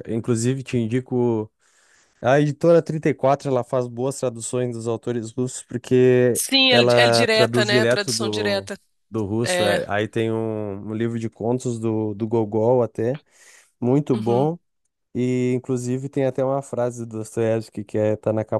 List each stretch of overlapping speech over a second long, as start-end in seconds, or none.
6.3-8.7